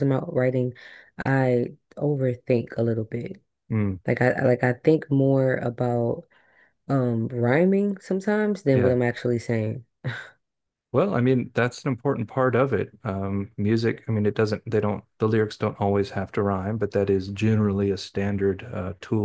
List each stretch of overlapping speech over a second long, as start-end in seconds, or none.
none